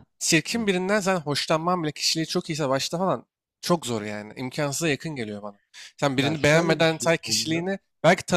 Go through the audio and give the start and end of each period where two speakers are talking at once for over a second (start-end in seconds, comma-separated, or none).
6.2-7.7